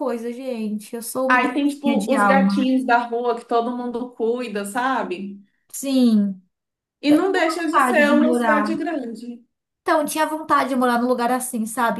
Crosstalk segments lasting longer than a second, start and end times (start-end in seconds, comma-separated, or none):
1.3-2.8, 7.1-8.7